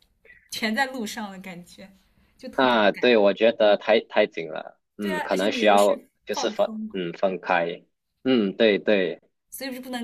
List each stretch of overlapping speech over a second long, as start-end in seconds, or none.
5.0-7.0